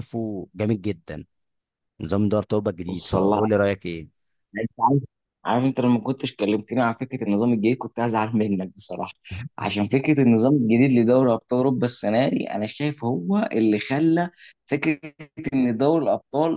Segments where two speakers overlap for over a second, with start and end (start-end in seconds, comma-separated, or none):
none